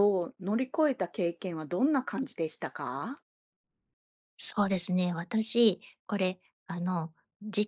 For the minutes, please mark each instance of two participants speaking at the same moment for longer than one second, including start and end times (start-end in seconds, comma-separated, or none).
none